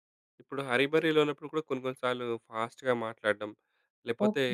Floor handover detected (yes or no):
no